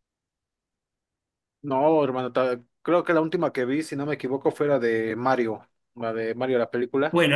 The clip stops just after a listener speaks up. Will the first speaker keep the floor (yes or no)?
no